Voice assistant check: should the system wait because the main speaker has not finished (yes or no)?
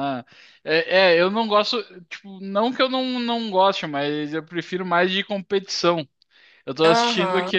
yes